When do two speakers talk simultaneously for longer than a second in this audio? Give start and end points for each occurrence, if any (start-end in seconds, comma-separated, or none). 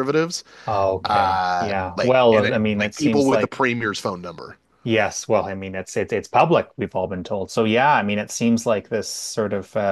1.1-3.6